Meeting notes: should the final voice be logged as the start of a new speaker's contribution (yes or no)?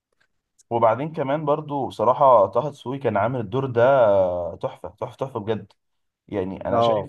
no